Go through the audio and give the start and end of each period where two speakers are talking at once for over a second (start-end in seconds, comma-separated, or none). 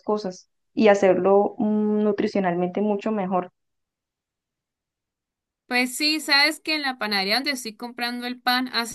none